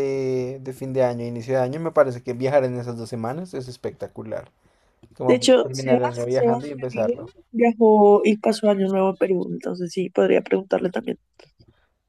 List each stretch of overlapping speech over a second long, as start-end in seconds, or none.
5.3-7.1